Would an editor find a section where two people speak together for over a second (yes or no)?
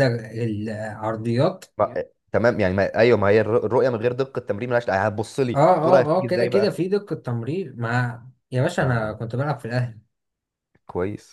yes